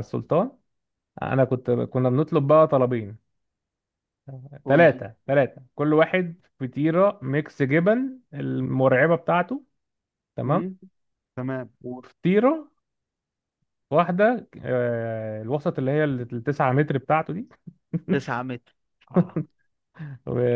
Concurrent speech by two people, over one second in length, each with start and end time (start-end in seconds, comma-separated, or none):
none